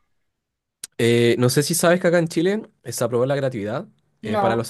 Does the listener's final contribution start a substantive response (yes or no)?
no